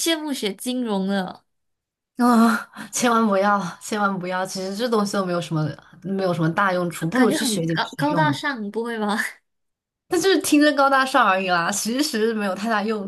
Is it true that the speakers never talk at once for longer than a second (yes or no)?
no